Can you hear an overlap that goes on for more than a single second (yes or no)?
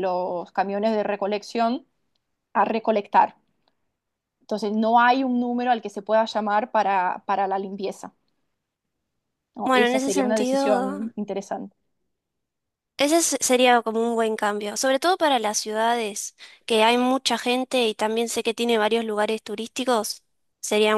yes